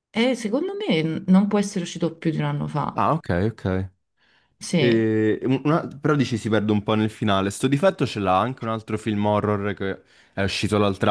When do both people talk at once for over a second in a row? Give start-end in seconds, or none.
none